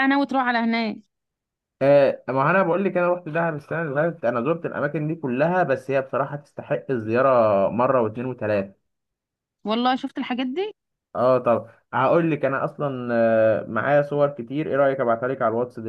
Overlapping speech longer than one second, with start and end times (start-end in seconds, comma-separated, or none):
none